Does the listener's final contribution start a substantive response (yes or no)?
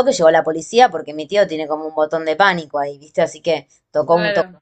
no